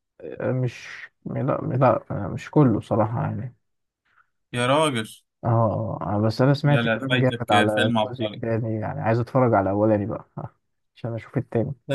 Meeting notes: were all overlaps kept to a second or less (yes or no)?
no